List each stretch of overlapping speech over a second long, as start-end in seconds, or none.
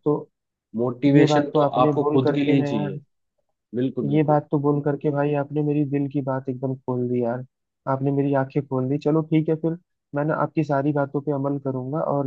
1.2-2.9